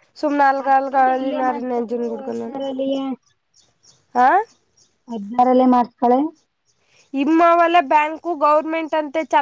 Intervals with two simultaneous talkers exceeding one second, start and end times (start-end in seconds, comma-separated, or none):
0.6-2.5